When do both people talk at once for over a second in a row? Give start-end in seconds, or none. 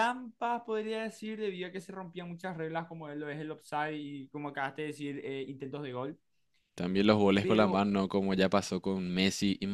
none